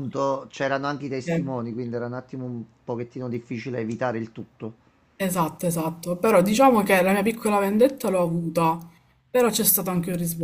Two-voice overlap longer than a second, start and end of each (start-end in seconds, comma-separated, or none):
none